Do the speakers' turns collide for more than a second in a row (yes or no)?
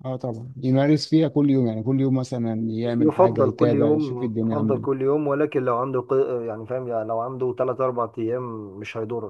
yes